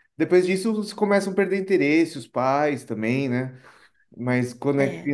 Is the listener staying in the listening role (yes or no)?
yes